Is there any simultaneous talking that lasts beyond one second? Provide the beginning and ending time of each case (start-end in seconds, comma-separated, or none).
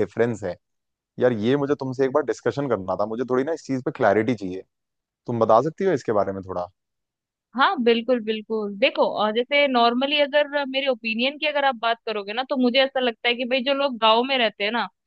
none